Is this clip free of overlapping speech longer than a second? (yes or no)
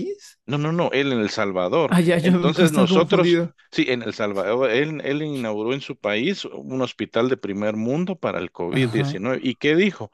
no